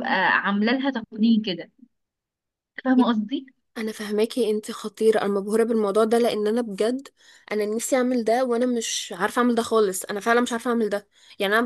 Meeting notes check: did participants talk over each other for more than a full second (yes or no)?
no